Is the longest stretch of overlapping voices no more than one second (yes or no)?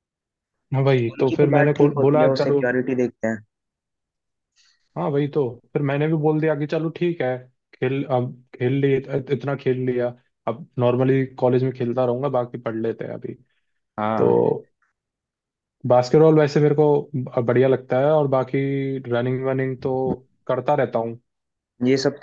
no